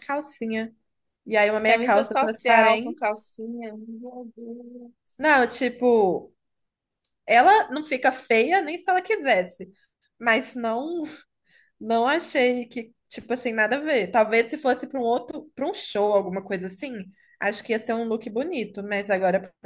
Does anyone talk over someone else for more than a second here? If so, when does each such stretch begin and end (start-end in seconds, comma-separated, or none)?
1.7-3.0